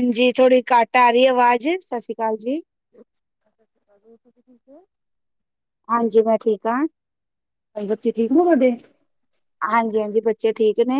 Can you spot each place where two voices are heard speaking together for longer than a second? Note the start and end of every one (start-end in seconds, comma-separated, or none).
none